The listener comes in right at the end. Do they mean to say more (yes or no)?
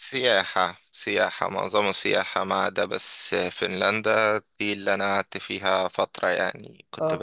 no